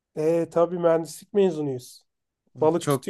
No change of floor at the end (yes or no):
no